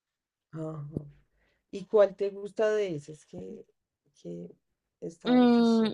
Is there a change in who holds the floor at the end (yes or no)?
yes